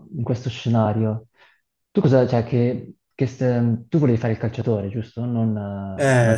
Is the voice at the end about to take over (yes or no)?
yes